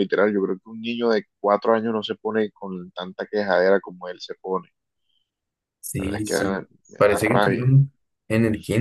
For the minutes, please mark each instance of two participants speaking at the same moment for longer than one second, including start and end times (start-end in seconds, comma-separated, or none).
6.0-7.6